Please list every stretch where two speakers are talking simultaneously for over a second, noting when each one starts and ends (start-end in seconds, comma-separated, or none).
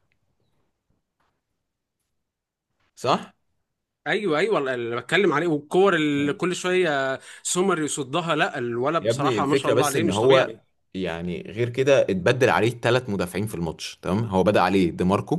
9.0-10.6